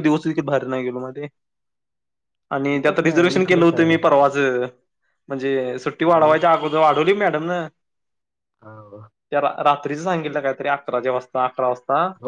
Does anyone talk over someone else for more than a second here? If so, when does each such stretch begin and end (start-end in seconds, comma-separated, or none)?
2.7-4.1